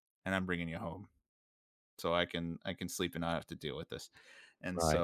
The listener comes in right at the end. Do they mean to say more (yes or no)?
no